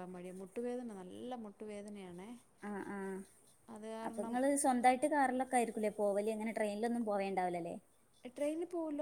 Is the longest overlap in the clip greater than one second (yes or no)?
no